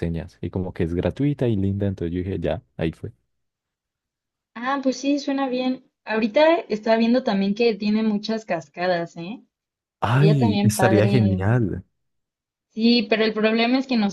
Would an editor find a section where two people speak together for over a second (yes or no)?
yes